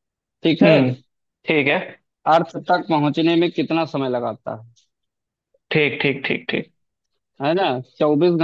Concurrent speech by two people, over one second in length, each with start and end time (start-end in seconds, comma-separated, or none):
none